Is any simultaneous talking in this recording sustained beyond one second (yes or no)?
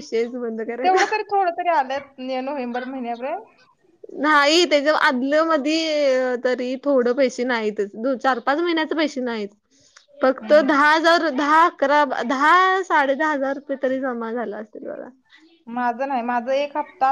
no